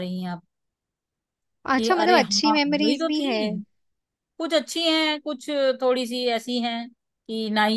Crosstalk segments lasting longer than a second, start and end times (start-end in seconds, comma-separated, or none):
1.8-3.4